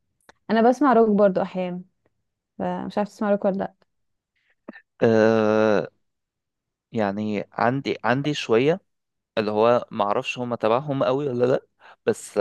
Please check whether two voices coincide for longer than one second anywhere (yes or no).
no